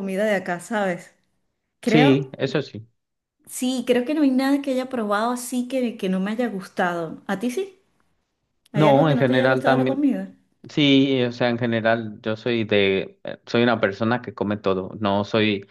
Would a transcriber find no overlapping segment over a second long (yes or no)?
no